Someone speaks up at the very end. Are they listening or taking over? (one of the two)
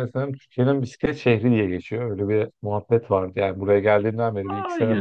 taking over